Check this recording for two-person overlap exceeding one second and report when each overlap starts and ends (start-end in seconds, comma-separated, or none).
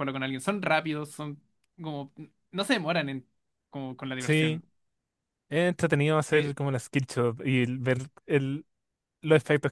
none